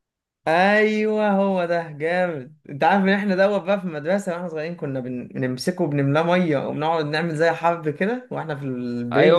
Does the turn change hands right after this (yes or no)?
yes